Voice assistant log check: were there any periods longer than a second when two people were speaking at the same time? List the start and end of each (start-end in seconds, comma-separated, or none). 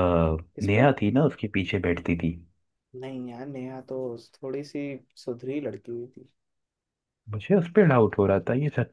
none